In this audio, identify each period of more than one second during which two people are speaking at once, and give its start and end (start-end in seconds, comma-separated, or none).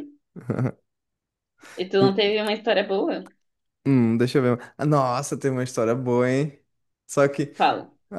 none